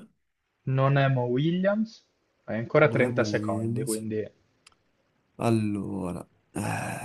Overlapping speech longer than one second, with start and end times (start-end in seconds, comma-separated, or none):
2.8-4.1